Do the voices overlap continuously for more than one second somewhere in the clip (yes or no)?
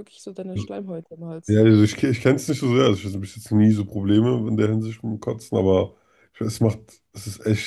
no